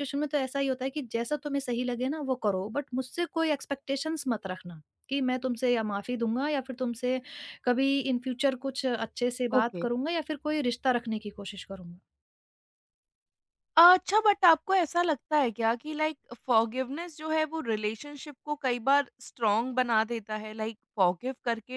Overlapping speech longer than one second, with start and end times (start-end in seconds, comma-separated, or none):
none